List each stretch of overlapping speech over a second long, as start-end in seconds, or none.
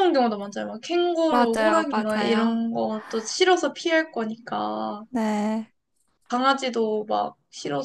1.3-2.6